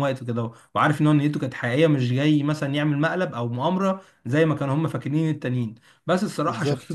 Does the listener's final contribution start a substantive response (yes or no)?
no